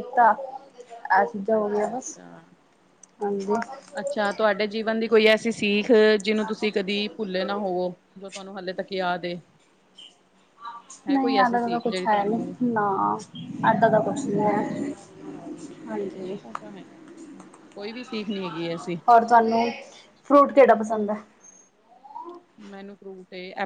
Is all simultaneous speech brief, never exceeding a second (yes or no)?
no